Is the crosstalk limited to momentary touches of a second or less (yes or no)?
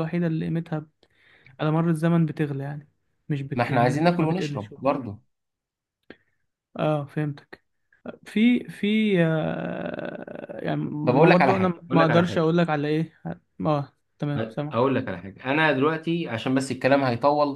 no